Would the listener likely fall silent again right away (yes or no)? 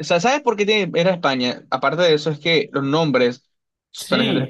no